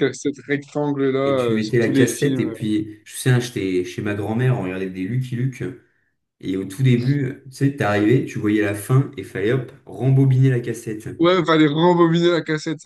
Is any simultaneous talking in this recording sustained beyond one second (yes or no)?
yes